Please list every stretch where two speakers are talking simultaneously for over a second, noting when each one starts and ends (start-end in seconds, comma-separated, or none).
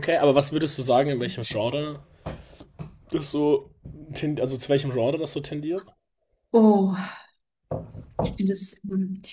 none